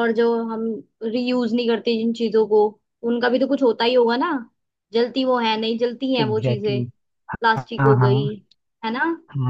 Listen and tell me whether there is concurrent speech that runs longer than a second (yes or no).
no